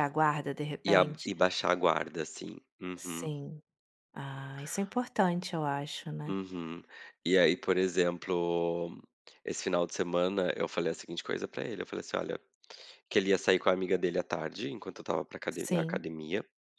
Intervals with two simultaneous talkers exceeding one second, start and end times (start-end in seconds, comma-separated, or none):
none